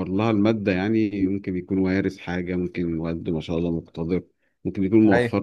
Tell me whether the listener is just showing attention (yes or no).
yes